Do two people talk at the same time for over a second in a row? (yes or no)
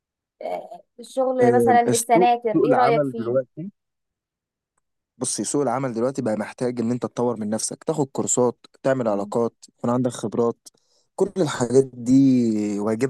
yes